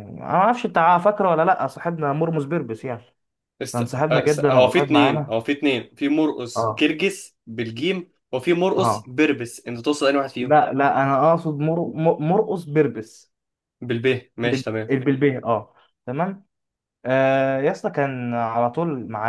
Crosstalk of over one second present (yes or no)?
yes